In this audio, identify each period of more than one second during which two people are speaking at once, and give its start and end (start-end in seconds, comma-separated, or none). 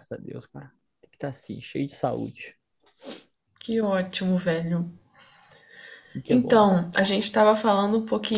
none